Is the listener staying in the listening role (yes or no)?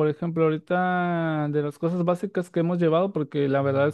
yes